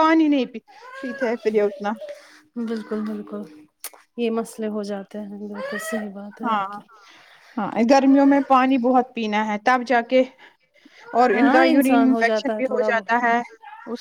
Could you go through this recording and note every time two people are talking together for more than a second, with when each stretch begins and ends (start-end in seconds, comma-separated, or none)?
11.3-13.2